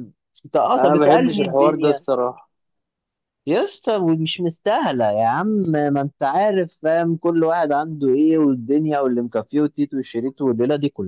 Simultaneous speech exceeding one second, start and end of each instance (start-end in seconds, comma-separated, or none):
0.8-2.0